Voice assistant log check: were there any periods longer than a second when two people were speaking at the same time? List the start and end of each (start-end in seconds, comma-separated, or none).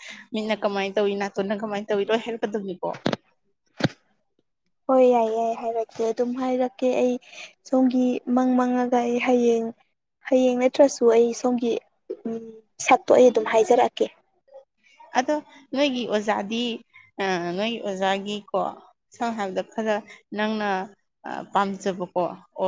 none